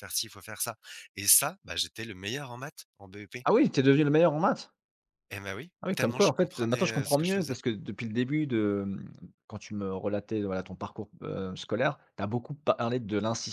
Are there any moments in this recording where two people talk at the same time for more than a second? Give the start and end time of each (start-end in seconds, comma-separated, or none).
5.8-7.6